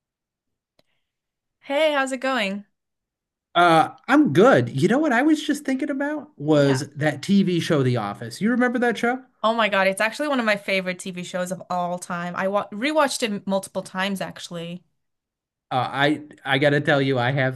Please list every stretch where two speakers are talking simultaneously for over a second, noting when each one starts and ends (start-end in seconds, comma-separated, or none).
none